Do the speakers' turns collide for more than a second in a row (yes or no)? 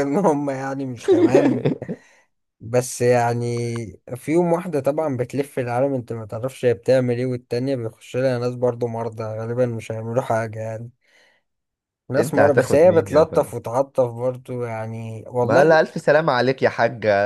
yes